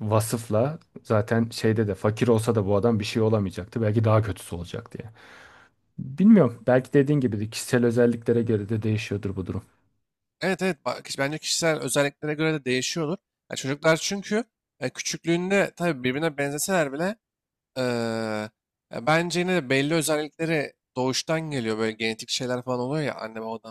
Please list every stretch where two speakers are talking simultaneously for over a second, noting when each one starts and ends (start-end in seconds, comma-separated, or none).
none